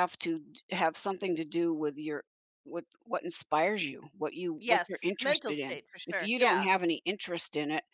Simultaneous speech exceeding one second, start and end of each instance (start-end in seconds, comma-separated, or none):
4.6-6.7